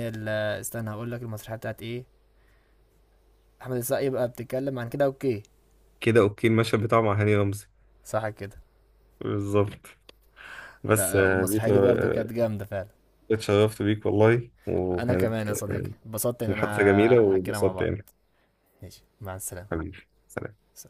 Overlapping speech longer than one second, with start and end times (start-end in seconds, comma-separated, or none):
10.9-12.3, 16.5-17.9